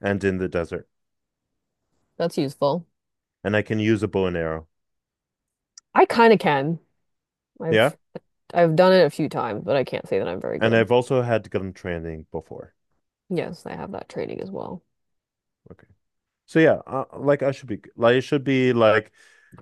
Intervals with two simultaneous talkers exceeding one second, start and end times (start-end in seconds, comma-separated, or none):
none